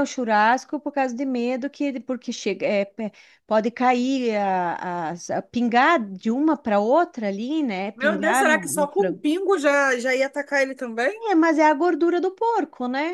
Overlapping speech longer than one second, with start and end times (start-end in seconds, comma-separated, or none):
8.0-9.2